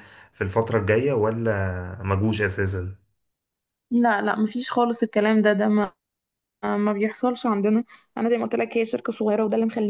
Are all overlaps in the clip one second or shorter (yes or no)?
yes